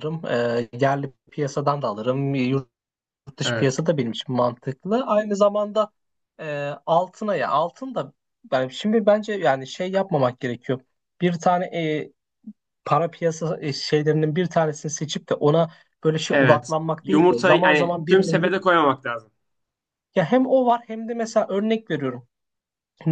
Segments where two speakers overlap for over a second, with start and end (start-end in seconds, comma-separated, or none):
16.3-18.5